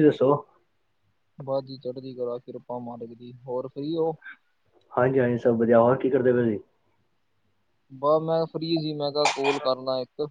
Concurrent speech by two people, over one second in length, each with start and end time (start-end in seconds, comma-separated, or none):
none